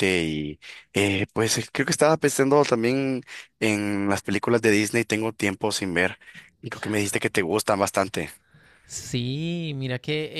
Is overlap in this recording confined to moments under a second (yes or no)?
yes